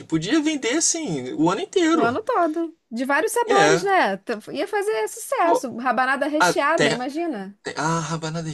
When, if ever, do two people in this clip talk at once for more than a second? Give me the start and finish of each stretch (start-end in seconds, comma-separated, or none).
none